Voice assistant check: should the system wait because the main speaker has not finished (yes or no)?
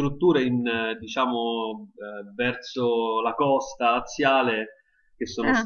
yes